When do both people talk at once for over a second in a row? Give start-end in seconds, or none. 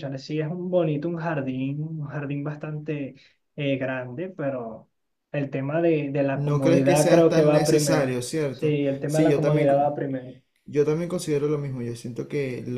6.3-10.0